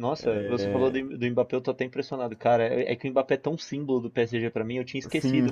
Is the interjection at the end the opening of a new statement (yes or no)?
no